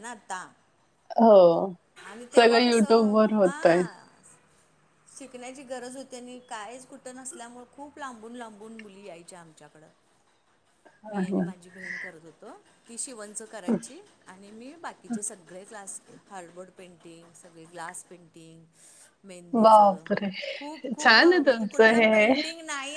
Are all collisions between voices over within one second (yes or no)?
no